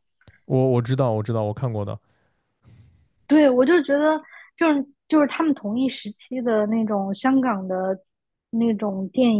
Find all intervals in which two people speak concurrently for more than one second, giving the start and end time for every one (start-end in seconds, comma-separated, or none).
none